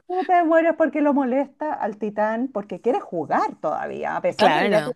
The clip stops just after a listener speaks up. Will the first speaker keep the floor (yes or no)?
yes